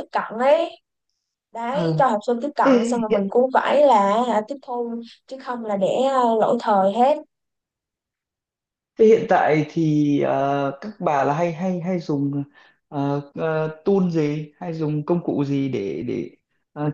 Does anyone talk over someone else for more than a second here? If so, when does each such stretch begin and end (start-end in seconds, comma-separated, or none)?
none